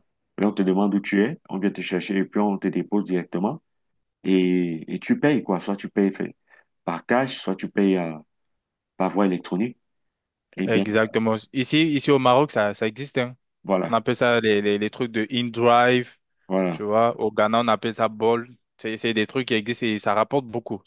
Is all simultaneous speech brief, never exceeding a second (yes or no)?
yes